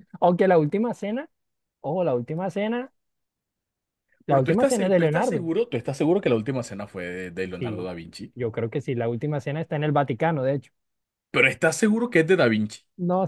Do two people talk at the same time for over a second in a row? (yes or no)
yes